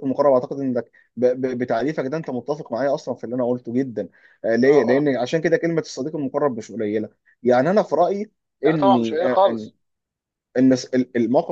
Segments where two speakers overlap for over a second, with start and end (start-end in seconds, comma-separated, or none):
none